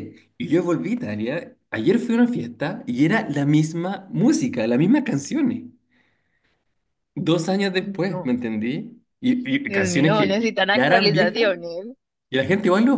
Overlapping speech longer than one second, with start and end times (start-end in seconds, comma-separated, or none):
9.7-11.5